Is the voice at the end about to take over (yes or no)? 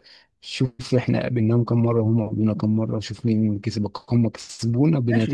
yes